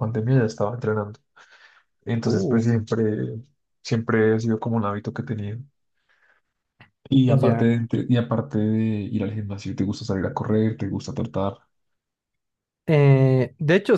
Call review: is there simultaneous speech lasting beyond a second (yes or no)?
no